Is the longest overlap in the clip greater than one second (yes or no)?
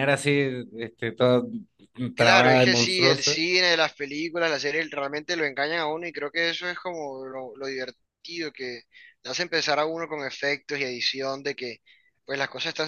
yes